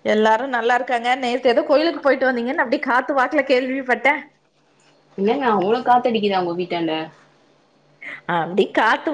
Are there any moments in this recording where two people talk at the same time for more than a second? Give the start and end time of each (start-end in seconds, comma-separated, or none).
none